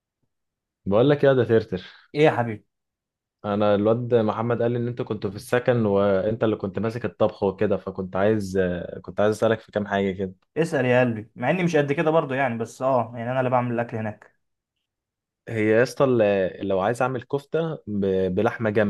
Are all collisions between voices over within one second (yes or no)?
yes